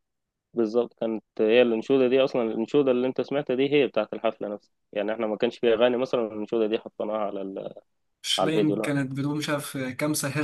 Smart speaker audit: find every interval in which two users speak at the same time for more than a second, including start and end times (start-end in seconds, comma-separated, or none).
none